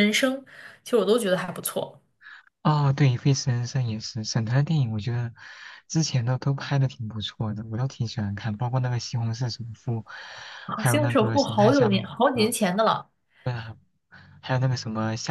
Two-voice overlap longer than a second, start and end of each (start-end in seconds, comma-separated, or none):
10.8-12.1